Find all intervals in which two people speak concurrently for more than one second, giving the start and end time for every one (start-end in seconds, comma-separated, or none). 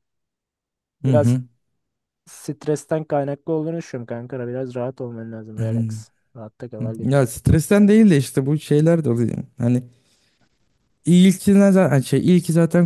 none